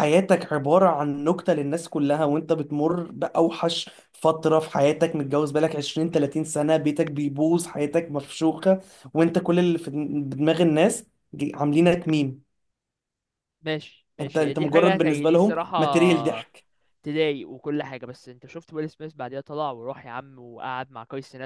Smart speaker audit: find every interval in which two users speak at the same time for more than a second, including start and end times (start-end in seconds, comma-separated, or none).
14.2-15.8